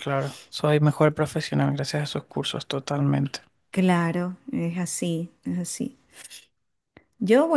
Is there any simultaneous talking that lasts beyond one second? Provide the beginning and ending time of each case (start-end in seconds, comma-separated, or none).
none